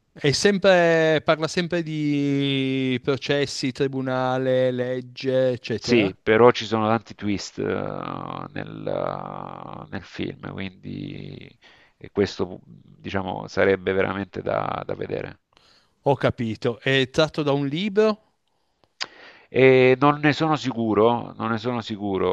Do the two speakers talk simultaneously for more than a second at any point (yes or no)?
no